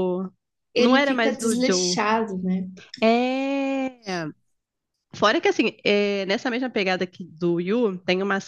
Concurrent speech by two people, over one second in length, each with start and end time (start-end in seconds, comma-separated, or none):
0.8-2.0